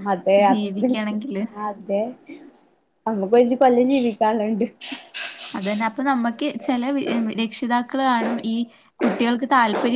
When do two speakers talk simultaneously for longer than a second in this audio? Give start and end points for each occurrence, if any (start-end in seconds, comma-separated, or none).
none